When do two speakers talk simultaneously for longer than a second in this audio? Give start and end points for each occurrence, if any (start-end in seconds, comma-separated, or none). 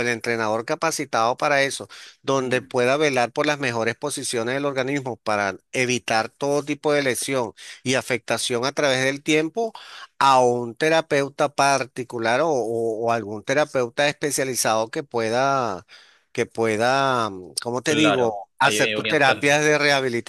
17.9-19.6